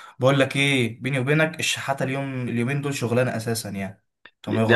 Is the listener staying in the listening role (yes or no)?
no